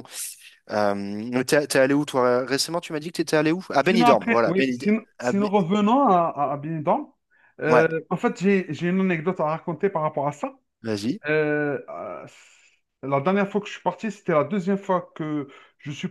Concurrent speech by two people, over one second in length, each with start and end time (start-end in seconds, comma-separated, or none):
3.8-5.5